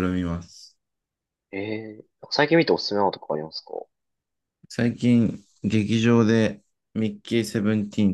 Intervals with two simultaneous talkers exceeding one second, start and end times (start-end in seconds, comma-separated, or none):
none